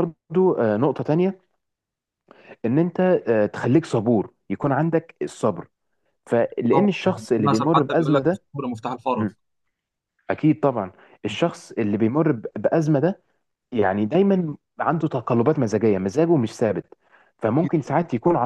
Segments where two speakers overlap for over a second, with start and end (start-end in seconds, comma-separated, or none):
6.7-8.4